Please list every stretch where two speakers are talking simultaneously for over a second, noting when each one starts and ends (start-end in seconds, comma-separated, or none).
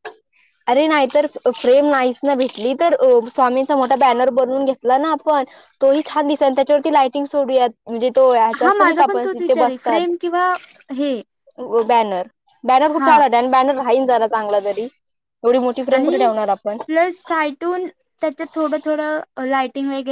8.6-10.1